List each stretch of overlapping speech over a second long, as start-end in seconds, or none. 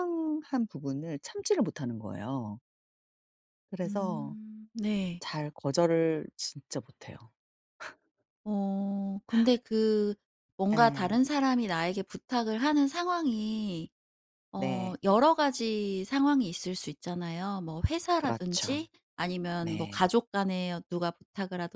none